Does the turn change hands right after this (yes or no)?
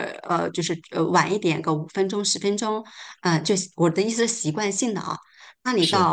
no